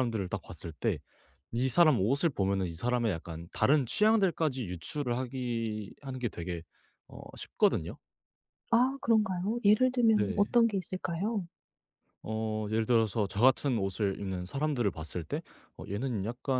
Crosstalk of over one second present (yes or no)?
no